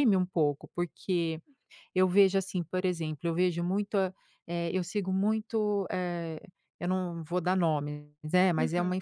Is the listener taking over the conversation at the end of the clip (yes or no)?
no